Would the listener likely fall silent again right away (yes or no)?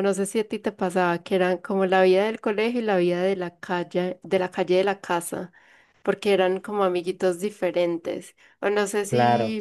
yes